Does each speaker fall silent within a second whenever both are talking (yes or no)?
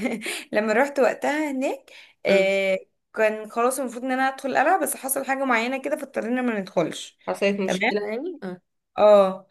yes